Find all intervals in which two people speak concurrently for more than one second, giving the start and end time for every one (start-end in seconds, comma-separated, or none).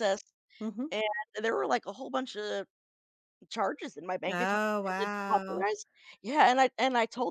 4.3-5.7